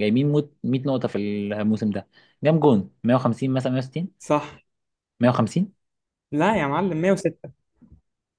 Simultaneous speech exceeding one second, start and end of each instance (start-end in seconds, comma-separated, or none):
none